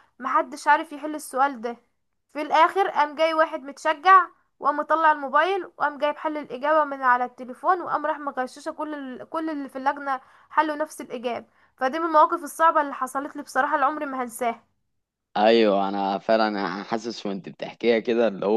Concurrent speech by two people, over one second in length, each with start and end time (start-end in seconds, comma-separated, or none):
none